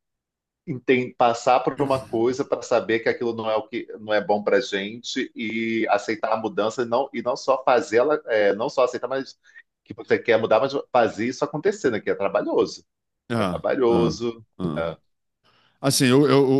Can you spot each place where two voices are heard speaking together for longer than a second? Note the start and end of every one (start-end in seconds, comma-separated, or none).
none